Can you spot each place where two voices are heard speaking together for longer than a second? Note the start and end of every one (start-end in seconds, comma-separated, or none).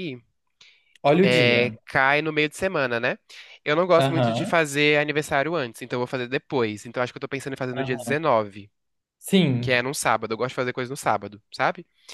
none